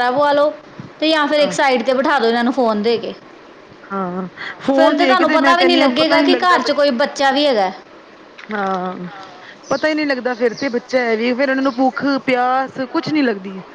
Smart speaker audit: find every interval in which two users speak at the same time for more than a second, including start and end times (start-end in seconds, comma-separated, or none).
4.8-6.7